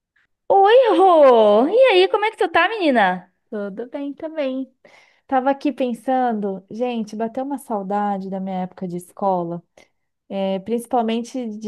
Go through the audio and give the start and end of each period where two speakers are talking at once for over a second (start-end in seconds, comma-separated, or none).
none